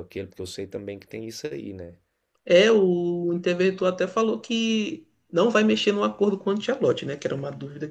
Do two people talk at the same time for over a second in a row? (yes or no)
no